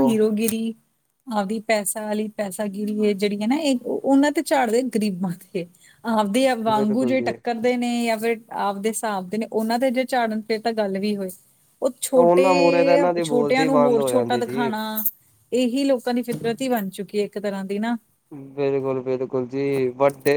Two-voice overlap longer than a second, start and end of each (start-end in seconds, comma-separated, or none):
13.2-14.7